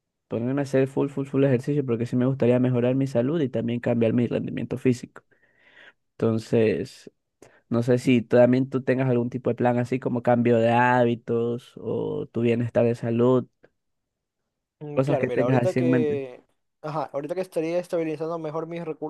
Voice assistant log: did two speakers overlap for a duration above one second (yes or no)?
yes